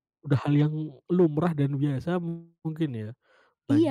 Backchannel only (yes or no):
no